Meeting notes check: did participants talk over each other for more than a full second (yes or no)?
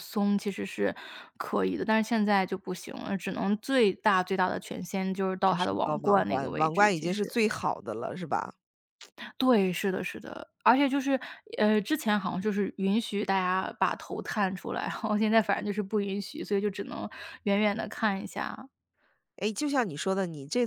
yes